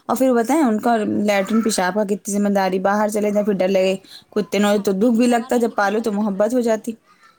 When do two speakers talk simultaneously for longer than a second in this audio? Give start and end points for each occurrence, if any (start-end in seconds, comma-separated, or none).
4.8-6.8